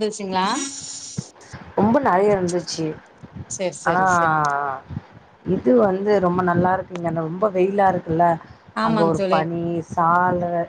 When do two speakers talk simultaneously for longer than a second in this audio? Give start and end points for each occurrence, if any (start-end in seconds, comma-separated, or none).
none